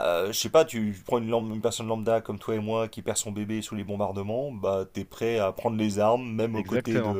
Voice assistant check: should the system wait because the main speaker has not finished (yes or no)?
yes